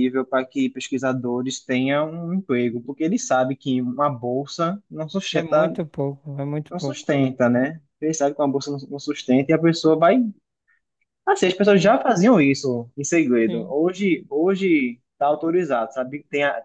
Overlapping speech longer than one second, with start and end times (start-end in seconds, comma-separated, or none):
none